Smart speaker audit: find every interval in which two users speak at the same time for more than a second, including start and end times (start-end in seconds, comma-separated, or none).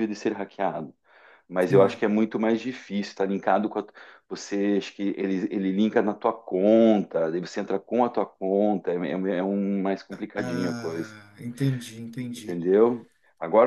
none